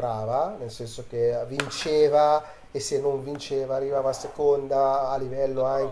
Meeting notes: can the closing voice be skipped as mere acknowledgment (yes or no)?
yes